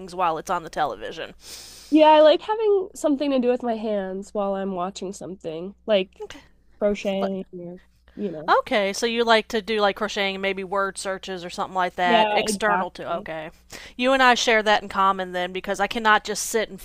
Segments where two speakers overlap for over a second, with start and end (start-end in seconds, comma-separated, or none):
12.0-13.3